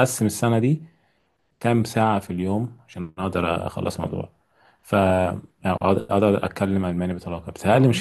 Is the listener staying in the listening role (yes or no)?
yes